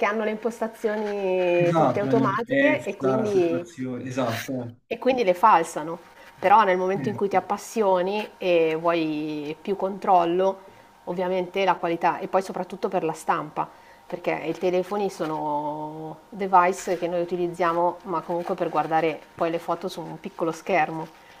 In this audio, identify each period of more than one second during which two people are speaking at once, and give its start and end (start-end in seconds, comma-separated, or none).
1.6-3.9